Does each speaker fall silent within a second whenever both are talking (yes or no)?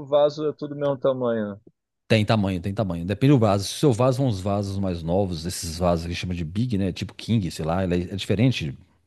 yes